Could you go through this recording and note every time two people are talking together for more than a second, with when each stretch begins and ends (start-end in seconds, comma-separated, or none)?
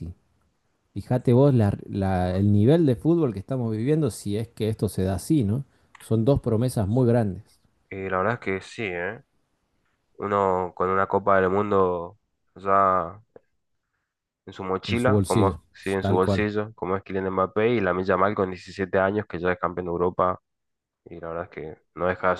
14.8-16.5